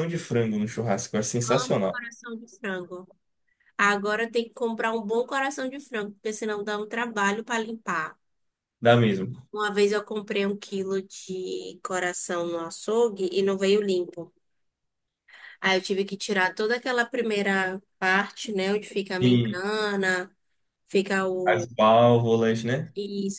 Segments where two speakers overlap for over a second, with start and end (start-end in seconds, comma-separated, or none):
none